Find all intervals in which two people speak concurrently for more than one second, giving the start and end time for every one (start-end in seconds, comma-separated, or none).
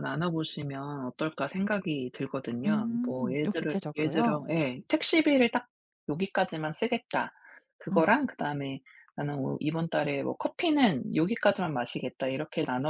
2.7-4.5